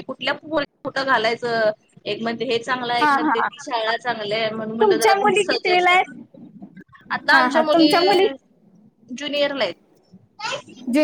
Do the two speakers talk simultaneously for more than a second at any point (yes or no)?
yes